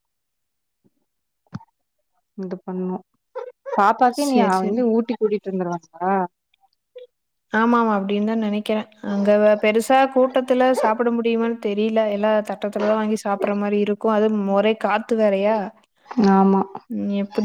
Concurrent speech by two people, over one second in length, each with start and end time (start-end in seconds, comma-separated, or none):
none